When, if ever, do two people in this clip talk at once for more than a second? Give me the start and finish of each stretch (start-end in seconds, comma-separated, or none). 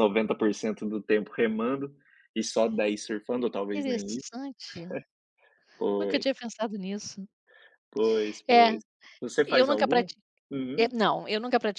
none